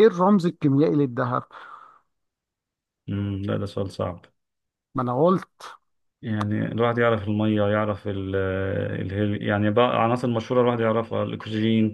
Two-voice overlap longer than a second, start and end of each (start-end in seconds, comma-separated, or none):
none